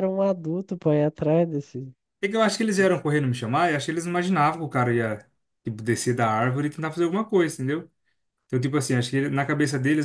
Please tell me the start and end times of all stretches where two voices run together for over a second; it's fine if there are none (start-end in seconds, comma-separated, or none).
none